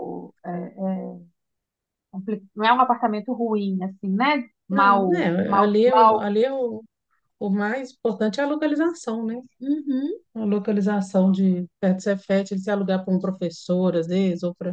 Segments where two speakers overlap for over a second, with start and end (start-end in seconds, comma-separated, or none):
4.7-6.3